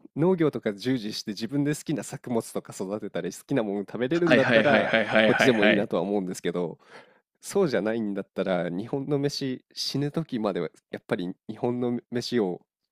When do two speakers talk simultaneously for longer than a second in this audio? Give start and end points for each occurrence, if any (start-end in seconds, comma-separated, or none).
4.3-5.9